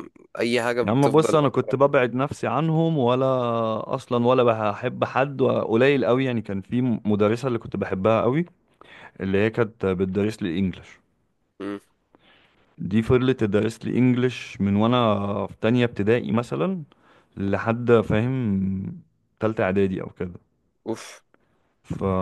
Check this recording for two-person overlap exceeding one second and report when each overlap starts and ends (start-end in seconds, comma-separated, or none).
0.8-2.3